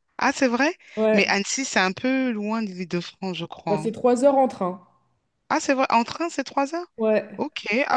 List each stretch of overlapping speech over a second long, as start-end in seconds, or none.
none